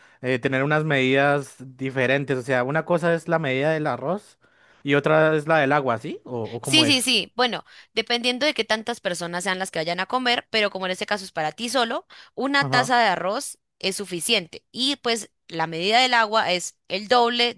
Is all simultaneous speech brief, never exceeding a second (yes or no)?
yes